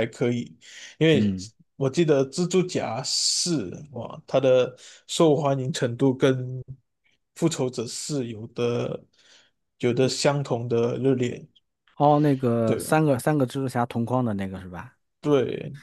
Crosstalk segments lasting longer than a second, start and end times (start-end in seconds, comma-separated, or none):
none